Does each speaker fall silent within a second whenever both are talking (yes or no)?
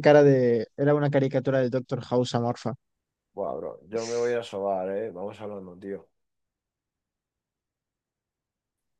yes